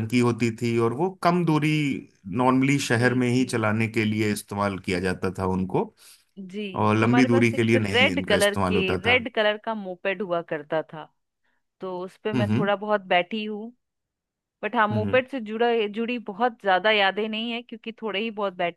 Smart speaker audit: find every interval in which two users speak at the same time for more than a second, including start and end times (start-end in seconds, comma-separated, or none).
7.0-9.2